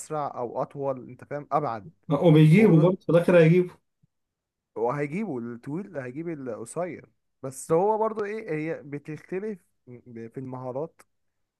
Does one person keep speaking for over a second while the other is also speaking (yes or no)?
no